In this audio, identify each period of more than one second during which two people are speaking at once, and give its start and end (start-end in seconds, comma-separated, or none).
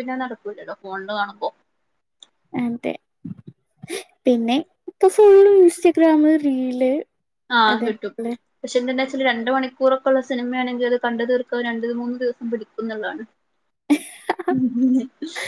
none